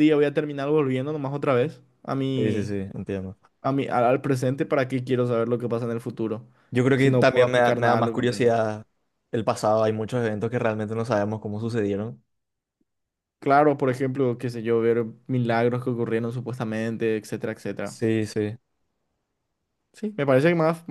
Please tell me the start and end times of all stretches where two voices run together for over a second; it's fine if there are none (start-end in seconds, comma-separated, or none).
7.0-8.5